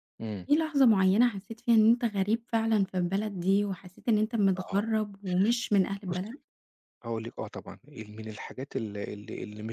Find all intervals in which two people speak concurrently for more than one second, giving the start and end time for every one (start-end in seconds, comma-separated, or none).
none